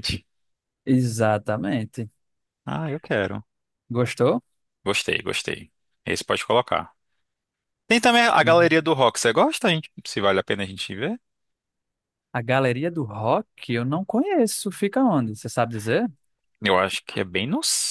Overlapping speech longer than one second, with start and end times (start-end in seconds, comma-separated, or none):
none